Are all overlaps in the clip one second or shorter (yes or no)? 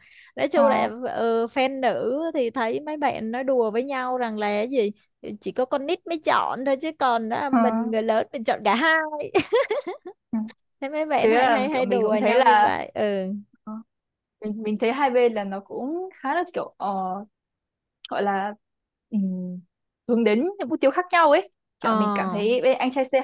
no